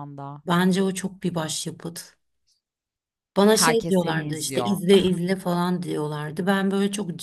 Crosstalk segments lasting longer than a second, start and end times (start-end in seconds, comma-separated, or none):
3.5-4.8